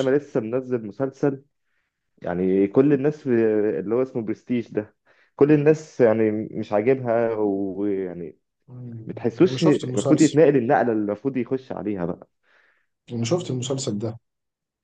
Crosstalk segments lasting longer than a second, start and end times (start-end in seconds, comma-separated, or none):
9.1-10.4